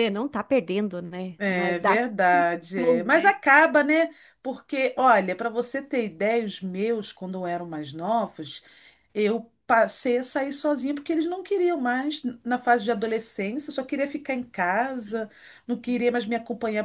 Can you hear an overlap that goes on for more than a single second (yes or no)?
yes